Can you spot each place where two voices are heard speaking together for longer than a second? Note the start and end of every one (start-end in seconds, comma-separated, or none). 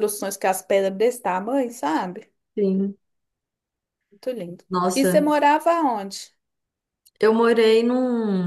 none